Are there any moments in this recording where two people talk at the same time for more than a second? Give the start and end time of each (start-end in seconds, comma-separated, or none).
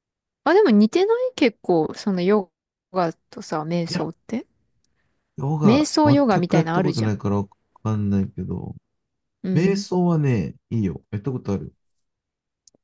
5.6-7.1